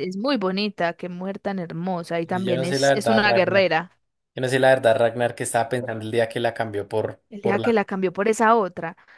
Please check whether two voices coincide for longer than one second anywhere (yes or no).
yes